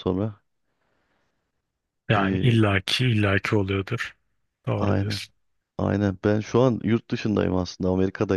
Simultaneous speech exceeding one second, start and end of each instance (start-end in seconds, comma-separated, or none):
none